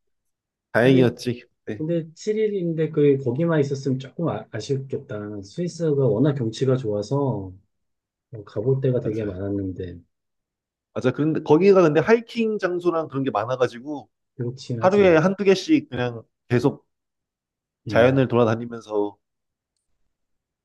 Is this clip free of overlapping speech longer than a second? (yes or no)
yes